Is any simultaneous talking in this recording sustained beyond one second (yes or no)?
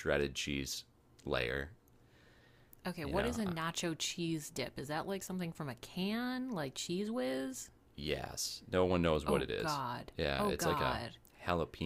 yes